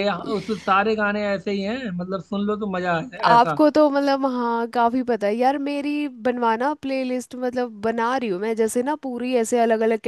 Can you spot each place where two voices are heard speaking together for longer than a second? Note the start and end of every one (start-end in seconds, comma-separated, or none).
none